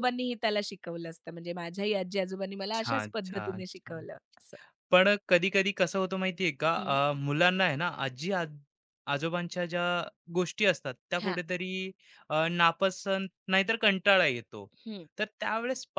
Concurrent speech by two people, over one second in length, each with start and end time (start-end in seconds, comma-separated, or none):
2.7-4.1